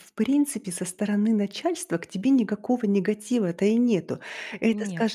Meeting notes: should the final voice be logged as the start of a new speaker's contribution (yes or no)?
no